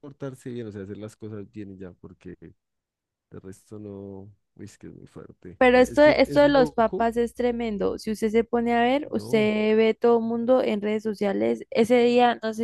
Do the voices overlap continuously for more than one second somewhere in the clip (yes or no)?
yes